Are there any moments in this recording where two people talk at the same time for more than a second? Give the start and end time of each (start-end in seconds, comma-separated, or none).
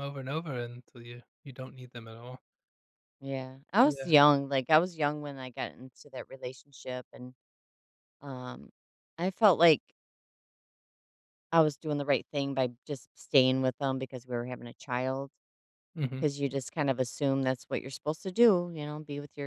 none